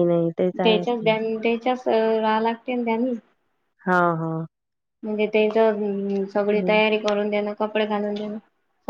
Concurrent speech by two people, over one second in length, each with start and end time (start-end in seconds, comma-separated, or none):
none